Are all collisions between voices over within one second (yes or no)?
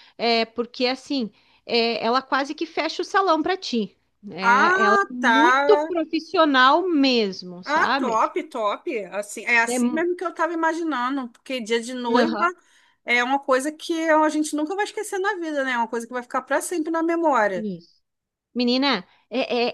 no